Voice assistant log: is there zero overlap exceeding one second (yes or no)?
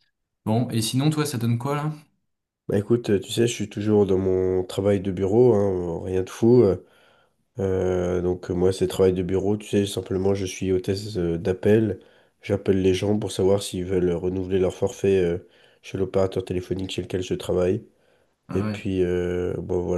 yes